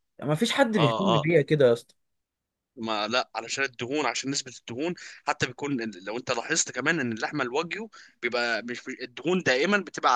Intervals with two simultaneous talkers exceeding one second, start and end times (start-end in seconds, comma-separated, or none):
none